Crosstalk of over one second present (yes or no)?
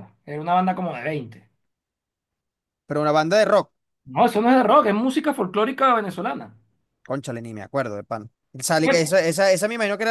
no